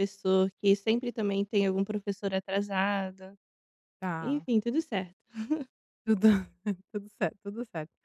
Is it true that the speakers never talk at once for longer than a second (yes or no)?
yes